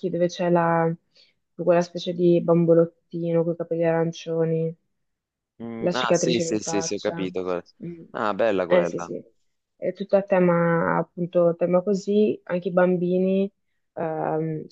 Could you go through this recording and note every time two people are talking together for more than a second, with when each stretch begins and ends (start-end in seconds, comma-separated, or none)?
5.8-7.2